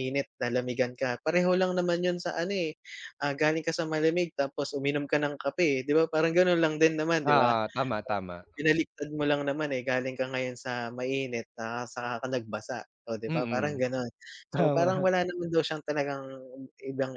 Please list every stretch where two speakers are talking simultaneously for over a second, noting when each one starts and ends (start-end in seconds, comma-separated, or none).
none